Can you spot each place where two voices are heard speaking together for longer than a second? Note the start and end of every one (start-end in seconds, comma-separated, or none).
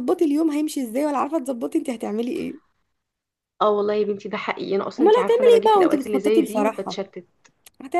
5.0-7.0